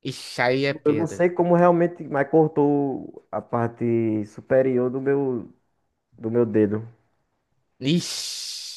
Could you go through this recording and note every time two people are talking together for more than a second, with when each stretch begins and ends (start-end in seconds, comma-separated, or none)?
none